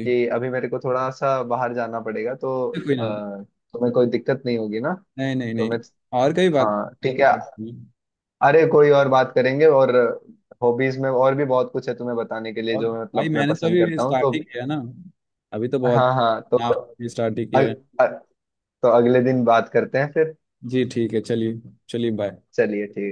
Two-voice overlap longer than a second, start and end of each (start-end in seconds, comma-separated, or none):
12.8-14.3